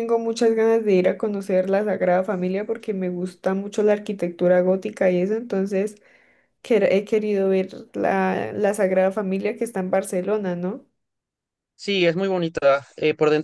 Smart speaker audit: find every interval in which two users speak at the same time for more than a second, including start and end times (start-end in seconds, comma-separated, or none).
none